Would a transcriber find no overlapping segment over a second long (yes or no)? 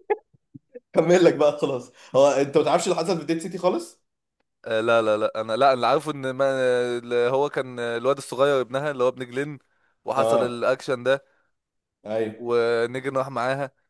yes